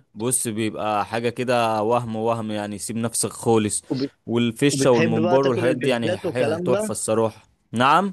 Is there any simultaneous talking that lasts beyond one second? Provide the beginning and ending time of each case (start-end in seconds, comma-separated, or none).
4.7-7.0